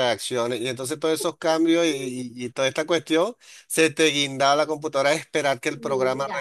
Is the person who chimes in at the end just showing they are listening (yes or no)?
yes